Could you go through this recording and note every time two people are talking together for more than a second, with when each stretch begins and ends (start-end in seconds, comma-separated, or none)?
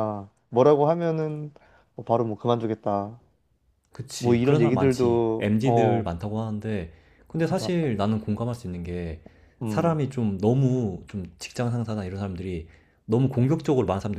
4.2-6.1